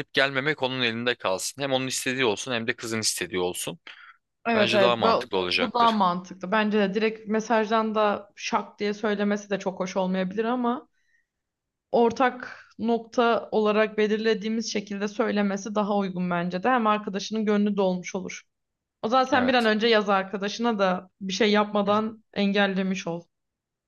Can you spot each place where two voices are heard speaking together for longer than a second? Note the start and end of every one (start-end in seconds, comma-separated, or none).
4.5-6.0